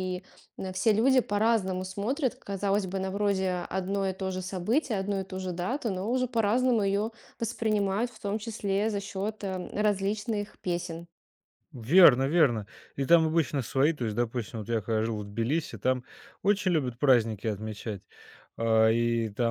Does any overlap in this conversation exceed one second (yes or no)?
no